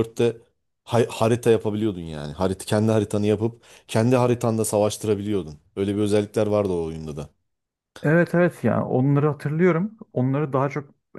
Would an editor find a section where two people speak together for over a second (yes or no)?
no